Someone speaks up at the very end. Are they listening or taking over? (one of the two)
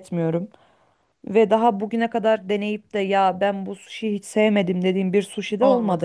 taking over